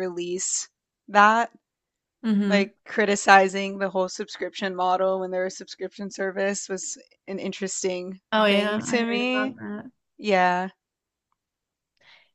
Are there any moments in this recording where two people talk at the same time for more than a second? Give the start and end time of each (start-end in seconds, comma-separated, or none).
8.3-9.6